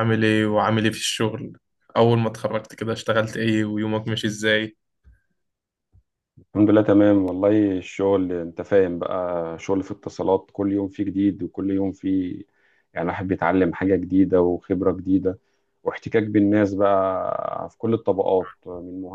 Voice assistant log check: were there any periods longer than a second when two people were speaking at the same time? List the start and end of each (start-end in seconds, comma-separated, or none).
none